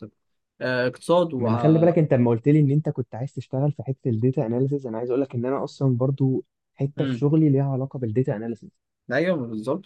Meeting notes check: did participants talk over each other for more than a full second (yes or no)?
no